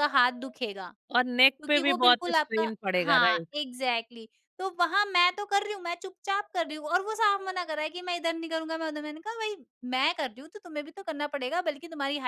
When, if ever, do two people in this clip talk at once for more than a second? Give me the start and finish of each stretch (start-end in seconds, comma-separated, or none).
1.6-3.5